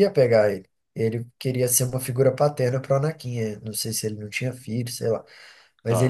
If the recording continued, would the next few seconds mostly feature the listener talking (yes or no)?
no